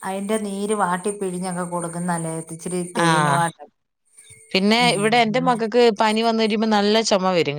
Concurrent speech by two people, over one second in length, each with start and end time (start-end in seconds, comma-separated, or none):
none